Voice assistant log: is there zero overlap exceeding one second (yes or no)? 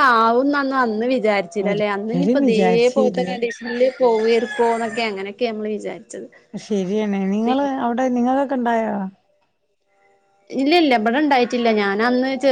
no